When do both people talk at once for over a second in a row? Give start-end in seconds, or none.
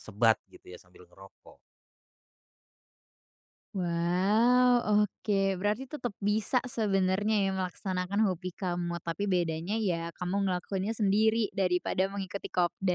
none